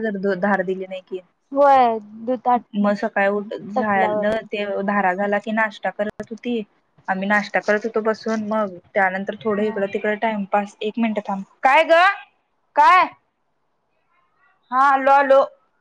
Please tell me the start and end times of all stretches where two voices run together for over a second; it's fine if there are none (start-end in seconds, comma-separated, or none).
none